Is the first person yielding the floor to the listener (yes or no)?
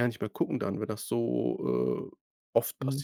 yes